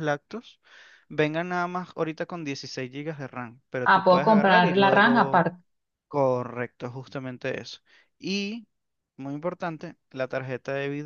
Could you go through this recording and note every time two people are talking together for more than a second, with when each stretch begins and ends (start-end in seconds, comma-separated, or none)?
3.9-5.5